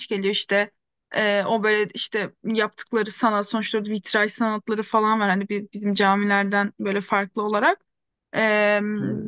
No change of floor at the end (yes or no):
yes